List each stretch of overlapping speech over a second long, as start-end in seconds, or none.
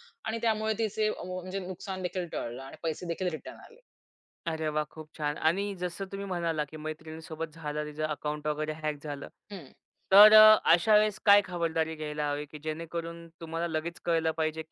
none